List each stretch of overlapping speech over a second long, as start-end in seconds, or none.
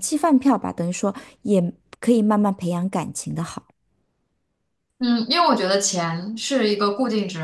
none